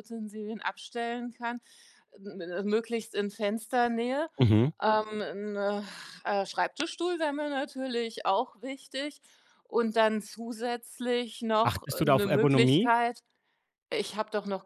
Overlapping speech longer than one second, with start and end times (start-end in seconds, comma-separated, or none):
11.6-12.9